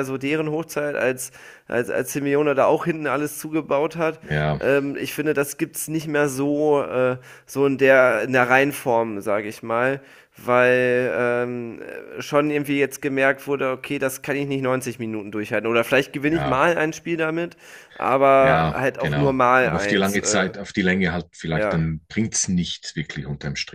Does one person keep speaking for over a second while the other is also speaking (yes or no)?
yes